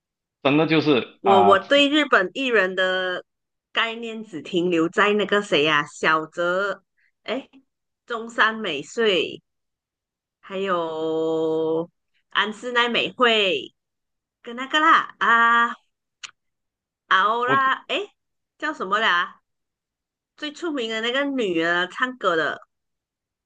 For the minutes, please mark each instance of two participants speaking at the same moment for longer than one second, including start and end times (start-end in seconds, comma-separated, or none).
none